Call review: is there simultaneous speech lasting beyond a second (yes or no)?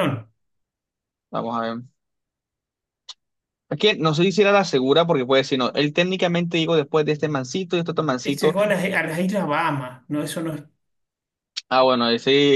no